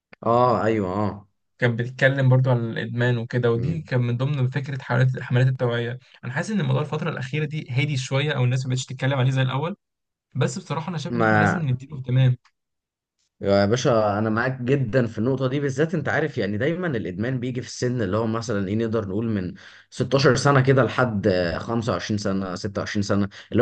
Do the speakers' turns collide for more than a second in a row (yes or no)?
no